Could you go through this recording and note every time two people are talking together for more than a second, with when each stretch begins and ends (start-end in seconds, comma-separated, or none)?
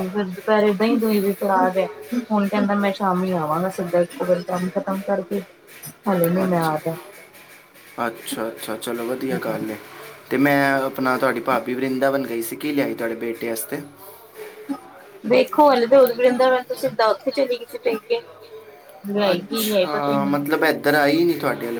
19.3-21.2